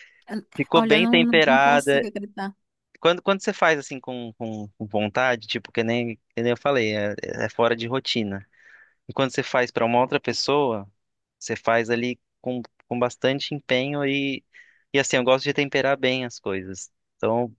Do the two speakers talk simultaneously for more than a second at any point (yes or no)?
yes